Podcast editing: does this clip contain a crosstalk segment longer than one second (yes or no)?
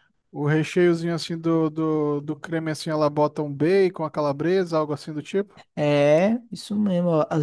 no